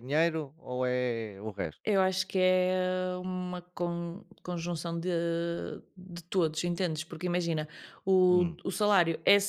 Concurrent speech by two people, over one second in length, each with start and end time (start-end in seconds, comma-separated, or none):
none